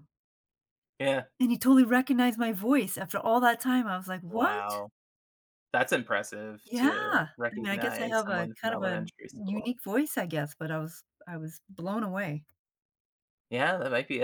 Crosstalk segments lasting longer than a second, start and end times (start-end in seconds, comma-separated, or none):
6.7-9.7